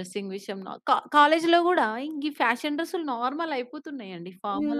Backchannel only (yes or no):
no